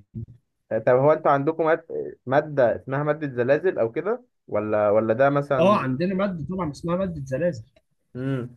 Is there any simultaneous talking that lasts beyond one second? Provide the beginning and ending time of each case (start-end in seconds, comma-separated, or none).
none